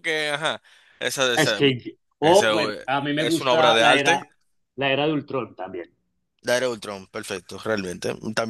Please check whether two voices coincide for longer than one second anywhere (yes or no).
yes